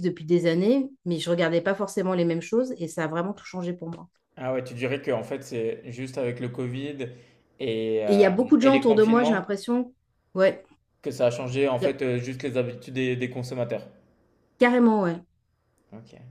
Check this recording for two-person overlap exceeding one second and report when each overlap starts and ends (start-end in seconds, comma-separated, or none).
8.1-9.6